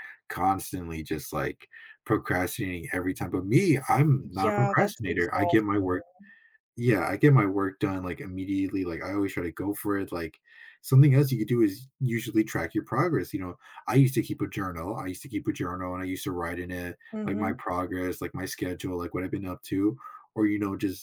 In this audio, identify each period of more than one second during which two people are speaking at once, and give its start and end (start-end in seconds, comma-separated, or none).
4.4-5.7